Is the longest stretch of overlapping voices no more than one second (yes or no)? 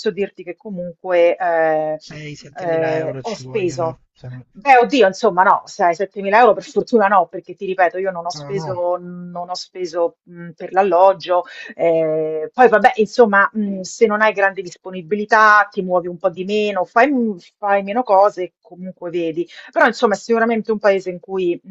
no